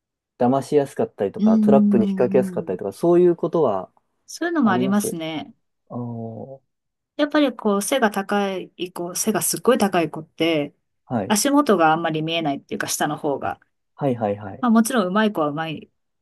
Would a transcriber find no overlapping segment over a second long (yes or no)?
no